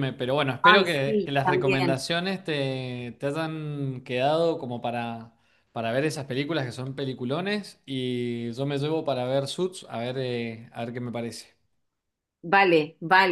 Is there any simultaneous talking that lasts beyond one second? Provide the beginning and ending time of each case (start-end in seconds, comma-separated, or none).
0.6-2.0